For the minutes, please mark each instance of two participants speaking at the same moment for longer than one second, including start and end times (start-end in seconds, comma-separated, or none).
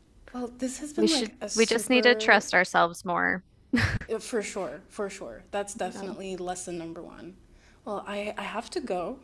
1.0-2.5